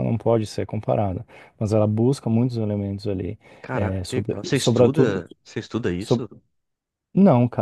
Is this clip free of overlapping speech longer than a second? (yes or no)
no